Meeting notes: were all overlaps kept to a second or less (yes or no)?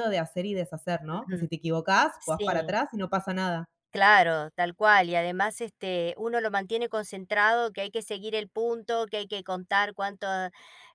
yes